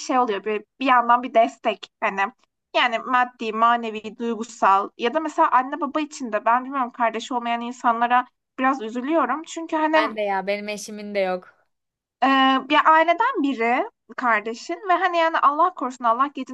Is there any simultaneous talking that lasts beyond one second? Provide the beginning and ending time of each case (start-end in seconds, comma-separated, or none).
none